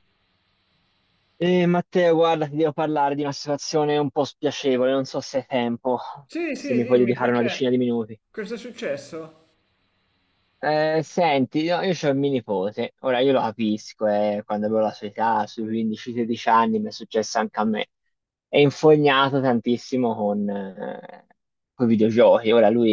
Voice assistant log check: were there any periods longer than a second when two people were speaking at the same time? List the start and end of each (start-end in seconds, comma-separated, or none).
6.5-7.9